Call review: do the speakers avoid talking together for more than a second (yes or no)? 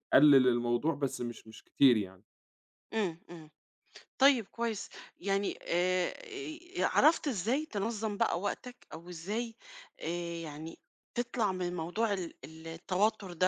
yes